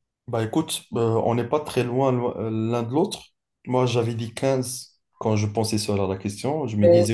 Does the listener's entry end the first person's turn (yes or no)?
no